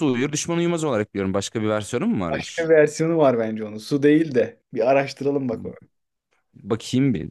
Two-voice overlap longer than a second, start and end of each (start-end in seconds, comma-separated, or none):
none